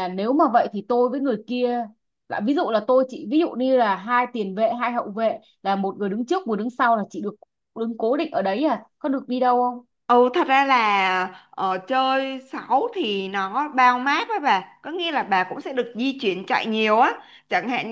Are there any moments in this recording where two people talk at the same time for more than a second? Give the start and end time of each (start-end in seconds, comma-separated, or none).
none